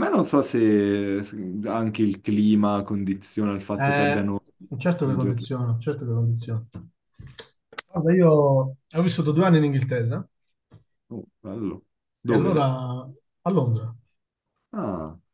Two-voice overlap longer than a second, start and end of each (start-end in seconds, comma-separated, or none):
none